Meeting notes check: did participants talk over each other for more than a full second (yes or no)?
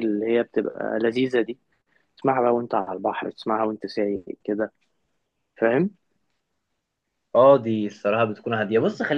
no